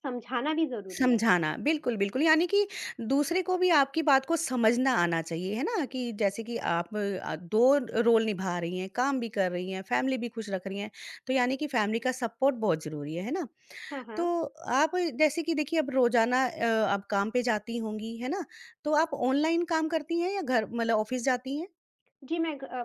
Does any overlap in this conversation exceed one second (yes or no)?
no